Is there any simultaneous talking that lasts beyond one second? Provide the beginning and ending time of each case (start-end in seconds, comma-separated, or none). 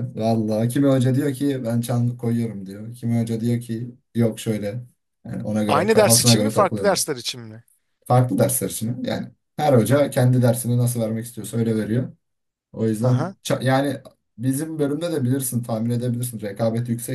5.7-7.1